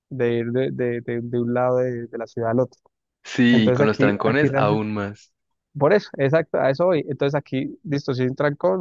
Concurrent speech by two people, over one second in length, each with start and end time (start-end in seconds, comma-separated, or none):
3.5-4.9